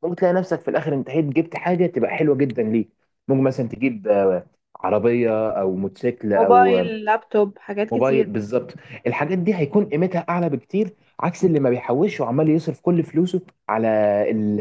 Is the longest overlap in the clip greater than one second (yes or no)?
no